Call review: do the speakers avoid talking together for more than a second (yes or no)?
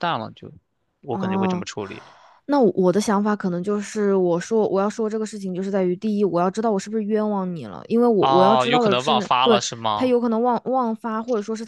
no